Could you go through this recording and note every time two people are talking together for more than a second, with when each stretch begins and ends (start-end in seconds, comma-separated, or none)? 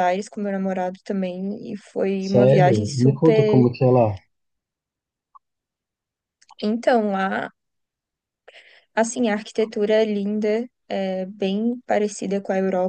2.2-3.6